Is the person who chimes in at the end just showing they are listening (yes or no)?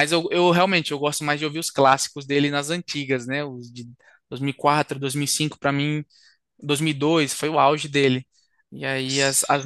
yes